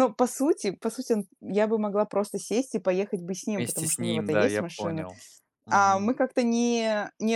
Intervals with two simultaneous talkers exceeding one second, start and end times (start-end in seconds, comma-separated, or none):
3.5-5.1